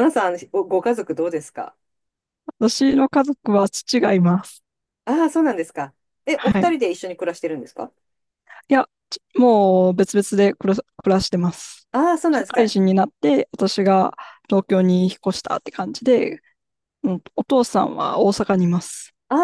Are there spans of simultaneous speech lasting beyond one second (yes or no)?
no